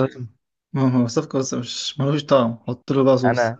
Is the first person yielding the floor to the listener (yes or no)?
yes